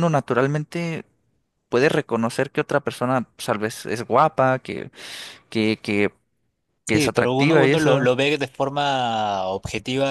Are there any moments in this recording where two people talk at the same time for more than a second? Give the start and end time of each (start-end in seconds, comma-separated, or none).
6.8-8.1